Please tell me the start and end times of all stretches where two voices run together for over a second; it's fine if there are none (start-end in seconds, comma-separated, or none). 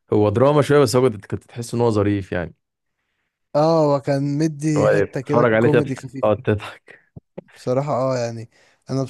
4.8-6.3